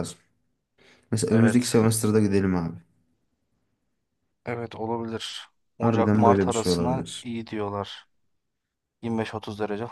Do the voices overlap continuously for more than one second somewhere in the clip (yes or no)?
yes